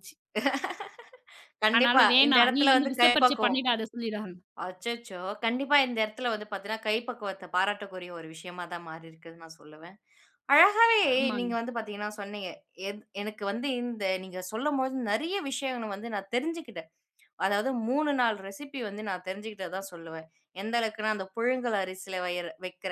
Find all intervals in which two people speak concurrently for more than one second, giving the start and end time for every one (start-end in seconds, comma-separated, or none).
1.7-3.6